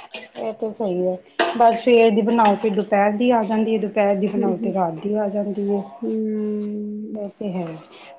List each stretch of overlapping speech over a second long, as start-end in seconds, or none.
none